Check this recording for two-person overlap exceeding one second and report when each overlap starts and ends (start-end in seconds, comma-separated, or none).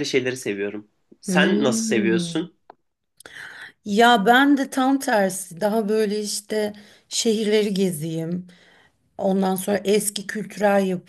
1.3-2.5